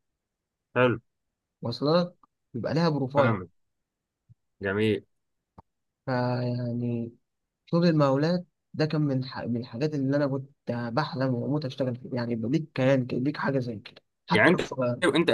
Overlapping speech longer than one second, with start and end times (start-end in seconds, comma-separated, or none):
none